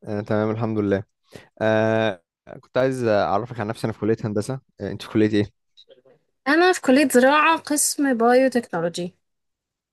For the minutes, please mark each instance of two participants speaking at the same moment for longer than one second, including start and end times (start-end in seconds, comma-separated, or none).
none